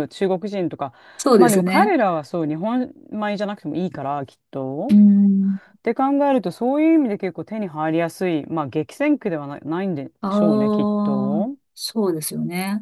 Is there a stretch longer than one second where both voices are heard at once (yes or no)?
yes